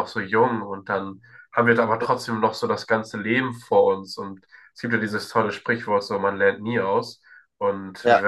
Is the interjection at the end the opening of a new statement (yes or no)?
no